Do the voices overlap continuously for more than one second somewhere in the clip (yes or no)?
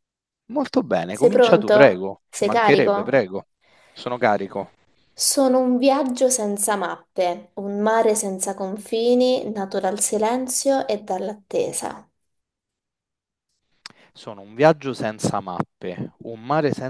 yes